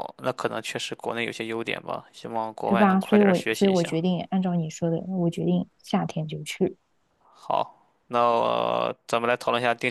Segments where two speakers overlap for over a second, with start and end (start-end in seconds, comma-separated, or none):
2.6-4.0